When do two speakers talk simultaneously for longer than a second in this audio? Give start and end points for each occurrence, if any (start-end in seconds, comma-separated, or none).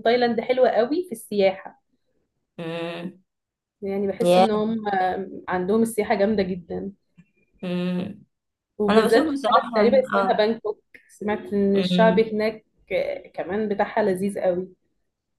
8.9-10.4